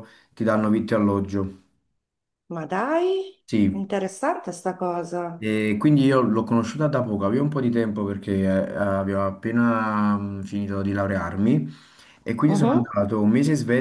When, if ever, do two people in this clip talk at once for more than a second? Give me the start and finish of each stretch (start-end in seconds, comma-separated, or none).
none